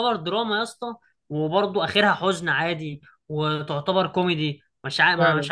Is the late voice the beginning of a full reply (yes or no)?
yes